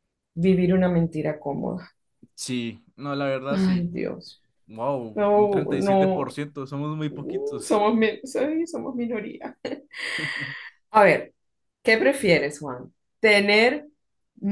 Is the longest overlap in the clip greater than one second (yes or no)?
yes